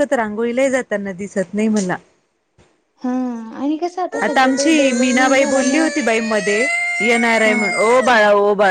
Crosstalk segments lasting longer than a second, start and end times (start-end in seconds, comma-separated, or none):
4.2-5.9